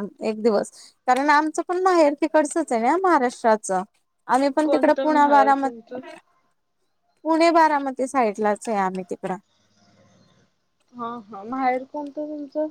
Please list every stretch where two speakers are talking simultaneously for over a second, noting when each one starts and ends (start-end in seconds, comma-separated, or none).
4.6-6.0